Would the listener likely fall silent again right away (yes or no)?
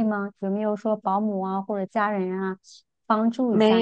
no